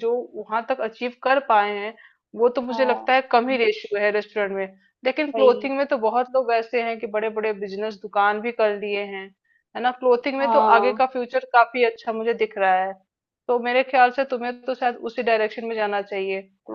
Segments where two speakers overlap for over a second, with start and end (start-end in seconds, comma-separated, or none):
none